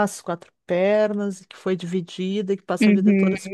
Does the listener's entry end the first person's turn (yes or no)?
no